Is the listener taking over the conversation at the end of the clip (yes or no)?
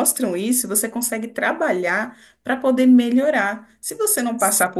no